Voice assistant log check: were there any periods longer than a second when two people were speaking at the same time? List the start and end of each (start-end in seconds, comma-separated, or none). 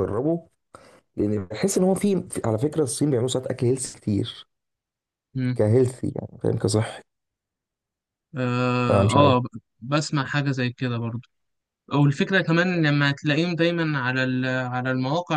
none